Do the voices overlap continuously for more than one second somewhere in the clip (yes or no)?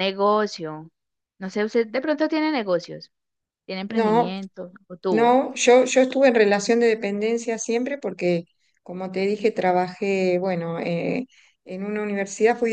no